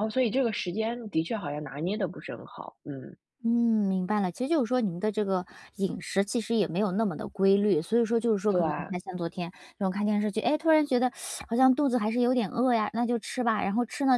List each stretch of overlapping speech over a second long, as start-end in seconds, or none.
none